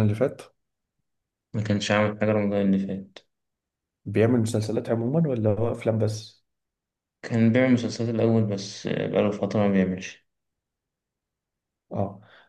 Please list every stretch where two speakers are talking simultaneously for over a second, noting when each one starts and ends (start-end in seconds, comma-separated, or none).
none